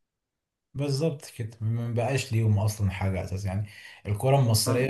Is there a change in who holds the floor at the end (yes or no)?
no